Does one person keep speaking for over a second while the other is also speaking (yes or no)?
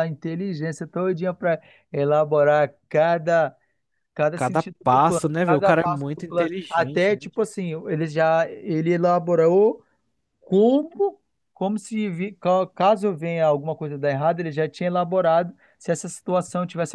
yes